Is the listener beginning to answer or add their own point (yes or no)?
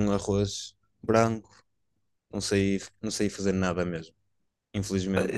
yes